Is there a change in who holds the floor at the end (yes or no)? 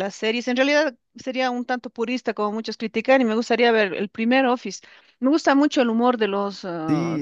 no